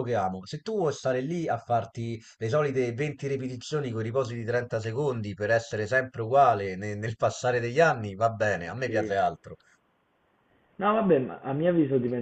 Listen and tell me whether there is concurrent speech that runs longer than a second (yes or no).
no